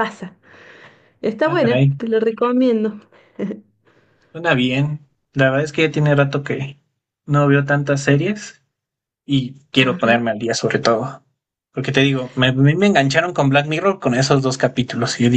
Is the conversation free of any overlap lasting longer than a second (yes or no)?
yes